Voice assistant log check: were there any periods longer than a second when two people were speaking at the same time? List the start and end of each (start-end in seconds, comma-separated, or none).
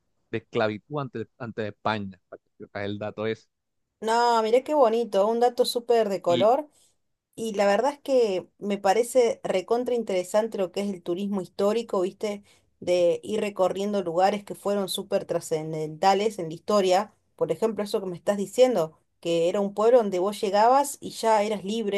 none